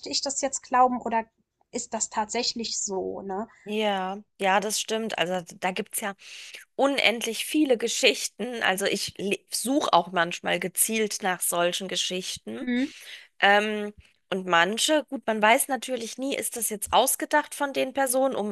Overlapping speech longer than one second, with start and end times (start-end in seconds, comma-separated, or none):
none